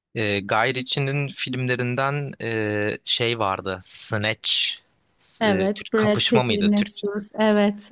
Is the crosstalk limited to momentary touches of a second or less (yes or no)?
no